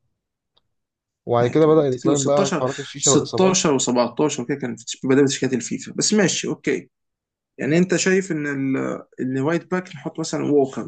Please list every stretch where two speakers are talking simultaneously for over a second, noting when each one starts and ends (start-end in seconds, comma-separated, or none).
1.4-3.6